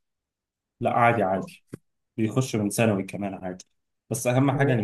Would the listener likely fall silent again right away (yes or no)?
yes